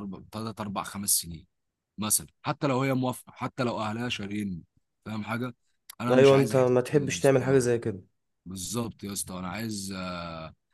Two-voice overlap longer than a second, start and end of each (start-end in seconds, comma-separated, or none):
6.1-7.7